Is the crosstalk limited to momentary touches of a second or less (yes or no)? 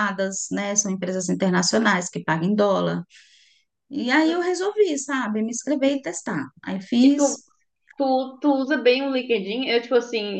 yes